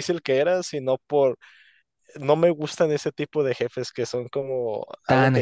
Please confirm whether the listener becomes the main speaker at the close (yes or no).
yes